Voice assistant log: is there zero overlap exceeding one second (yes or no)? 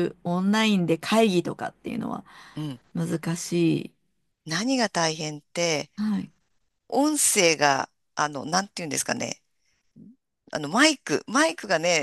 yes